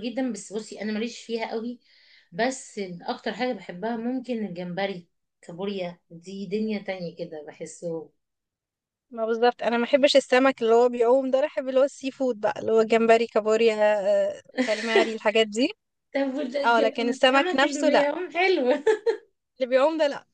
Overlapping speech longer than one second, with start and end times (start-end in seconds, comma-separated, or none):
16.6-18.1